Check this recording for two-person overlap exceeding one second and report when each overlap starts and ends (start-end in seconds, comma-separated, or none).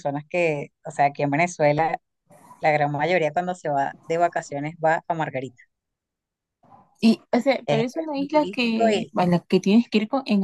7.7-9.1